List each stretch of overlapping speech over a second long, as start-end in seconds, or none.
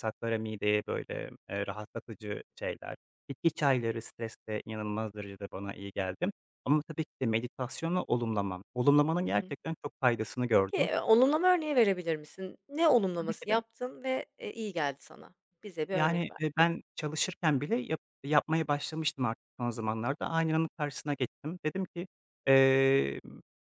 none